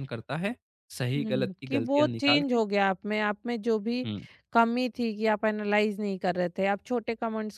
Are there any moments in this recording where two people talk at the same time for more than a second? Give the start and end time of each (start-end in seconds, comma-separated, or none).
1.2-2.6